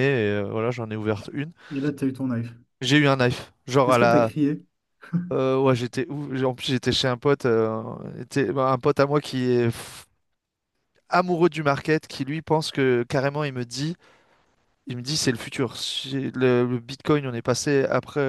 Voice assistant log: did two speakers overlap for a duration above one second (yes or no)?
no